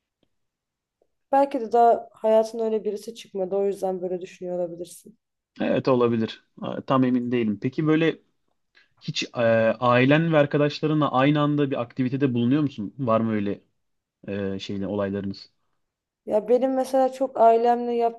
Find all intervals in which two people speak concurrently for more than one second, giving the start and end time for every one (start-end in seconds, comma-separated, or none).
none